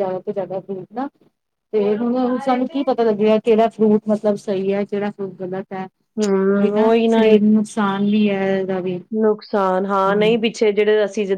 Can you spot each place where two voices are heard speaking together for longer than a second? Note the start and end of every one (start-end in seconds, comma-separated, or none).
none